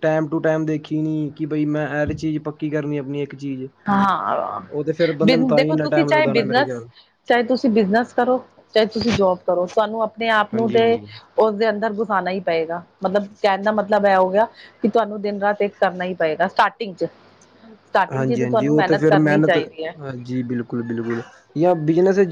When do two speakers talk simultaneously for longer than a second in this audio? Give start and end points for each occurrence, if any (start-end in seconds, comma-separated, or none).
5.2-6.8, 18.1-19.6